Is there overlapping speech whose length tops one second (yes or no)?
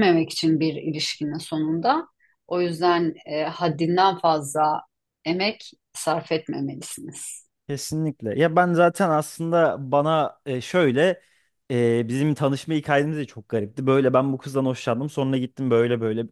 no